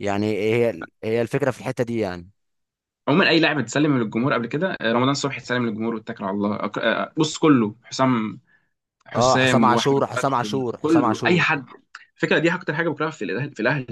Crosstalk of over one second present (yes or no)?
yes